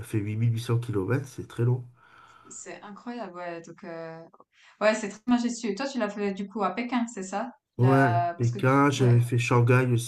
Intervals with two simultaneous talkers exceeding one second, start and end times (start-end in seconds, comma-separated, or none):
7.8-9.3